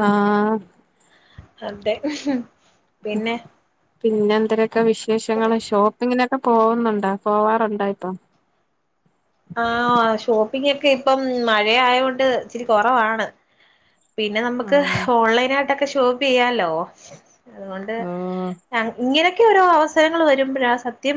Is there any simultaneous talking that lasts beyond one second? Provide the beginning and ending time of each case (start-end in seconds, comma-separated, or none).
none